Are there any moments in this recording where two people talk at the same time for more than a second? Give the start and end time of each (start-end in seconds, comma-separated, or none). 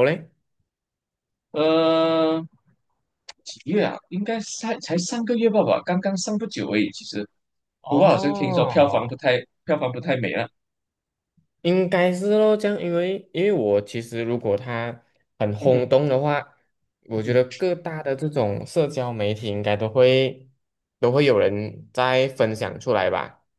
7.9-9.2